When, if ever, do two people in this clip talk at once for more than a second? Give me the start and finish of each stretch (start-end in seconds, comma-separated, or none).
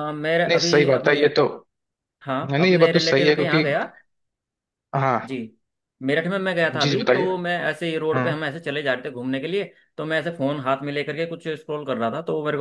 2.4-3.6